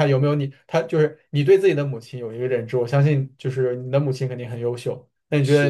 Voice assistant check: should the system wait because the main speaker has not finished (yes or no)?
yes